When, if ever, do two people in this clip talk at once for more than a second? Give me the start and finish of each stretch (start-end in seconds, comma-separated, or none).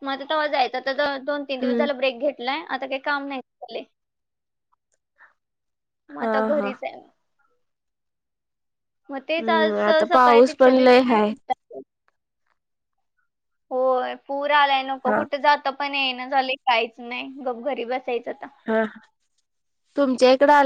9.4-11.3